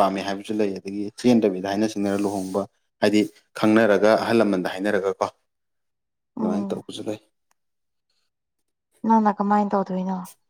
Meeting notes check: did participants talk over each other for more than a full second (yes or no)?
no